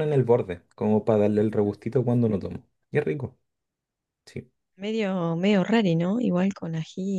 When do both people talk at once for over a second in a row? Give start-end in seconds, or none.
none